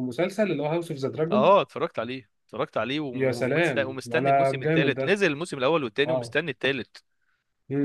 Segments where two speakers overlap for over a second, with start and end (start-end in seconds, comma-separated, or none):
3.1-5.2